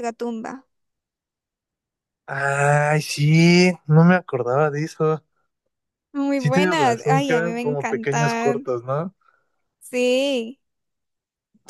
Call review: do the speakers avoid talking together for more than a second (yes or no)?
no